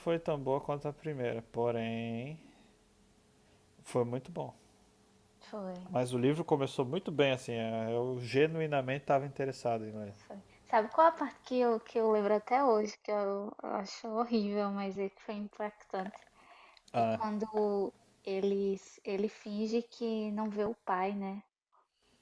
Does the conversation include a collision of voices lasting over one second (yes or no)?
no